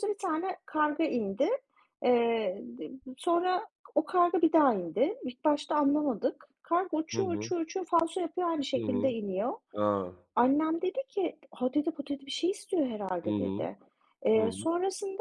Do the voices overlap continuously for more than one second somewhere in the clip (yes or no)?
no